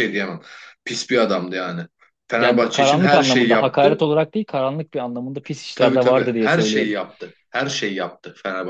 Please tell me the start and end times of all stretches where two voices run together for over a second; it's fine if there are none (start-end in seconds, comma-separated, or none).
2.4-4.1, 5.8-7.0